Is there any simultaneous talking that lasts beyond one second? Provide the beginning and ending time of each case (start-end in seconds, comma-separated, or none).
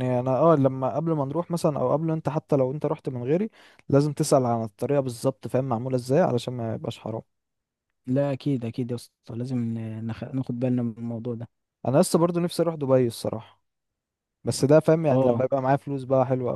none